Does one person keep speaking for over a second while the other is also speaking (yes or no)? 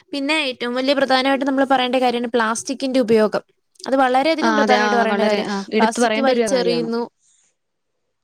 yes